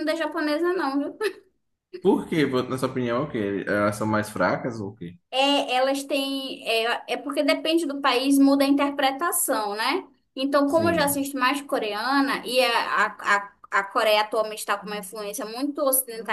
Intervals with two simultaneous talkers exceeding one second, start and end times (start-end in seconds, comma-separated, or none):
none